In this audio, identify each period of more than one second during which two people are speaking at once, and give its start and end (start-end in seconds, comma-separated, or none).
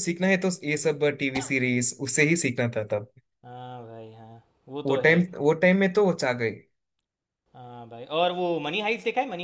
none